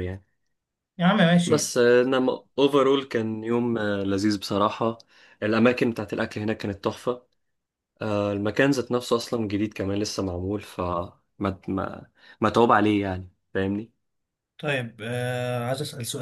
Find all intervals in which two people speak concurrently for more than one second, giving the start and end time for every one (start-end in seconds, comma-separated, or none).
none